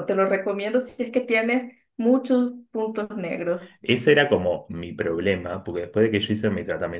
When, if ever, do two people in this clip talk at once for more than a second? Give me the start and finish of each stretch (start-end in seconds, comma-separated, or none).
none